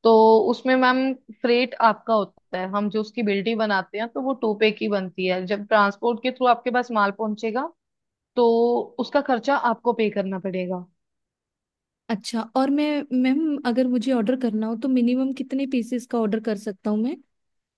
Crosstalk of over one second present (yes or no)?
no